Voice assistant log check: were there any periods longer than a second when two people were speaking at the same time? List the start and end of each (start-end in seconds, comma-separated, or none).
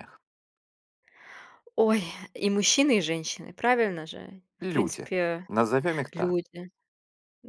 none